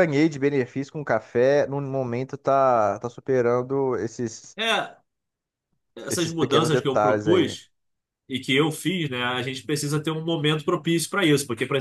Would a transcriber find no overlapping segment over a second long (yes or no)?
no